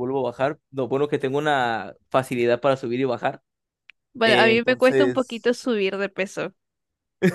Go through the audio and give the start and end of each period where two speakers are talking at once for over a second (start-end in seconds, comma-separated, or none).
4.2-5.6